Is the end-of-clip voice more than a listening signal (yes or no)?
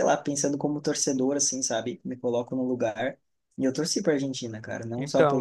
no